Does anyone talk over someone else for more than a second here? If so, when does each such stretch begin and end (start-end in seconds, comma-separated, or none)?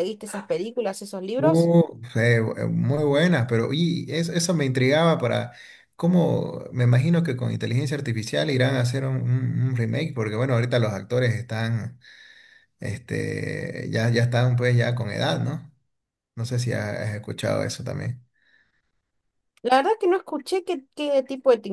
none